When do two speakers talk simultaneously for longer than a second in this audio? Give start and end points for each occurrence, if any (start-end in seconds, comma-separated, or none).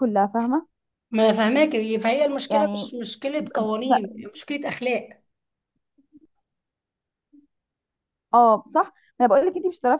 none